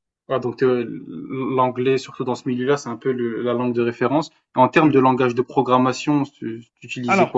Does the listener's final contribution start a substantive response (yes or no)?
yes